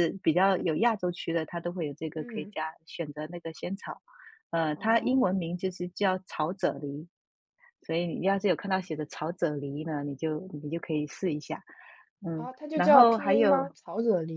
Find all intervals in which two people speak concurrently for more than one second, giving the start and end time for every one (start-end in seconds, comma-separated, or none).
12.3-13.8